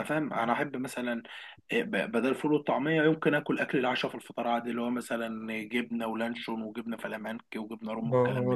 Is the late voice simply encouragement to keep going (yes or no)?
no